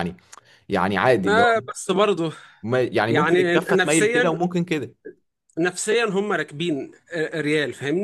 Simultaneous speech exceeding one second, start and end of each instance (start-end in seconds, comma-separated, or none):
3.1-4.3